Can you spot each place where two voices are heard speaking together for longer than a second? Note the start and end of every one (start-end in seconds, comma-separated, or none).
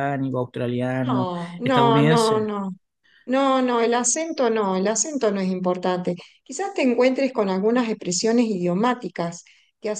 1.1-2.5